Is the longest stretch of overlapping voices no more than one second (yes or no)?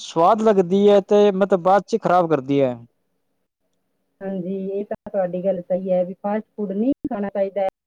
yes